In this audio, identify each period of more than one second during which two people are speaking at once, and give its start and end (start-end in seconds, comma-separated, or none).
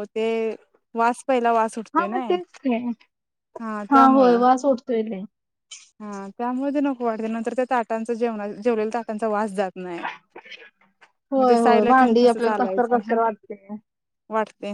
11.4-13.2